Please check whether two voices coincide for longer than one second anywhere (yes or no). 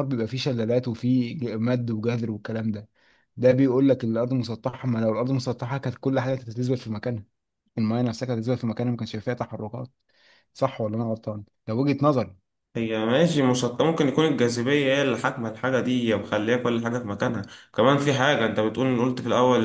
no